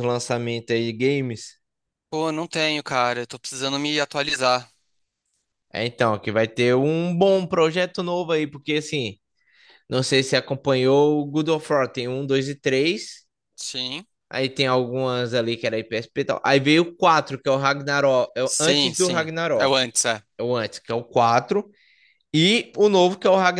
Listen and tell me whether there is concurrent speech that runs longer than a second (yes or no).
yes